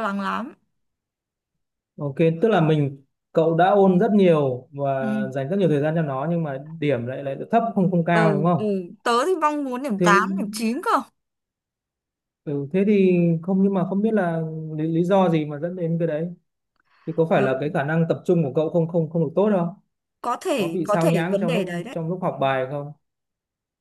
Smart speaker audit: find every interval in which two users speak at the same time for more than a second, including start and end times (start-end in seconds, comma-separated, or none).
20.6-22.0